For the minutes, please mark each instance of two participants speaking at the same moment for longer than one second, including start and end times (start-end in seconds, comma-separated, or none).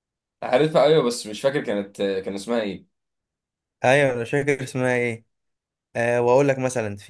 none